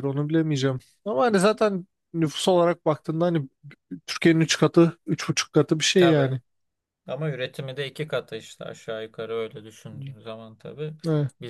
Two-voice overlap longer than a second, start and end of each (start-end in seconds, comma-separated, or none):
none